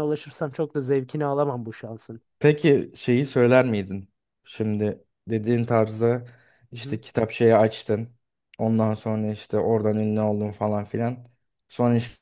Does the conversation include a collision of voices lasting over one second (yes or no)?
no